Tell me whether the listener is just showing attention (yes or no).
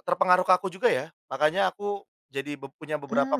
yes